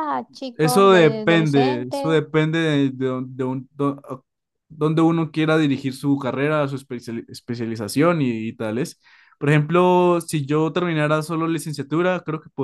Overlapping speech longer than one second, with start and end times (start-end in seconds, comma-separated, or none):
0.5-2.1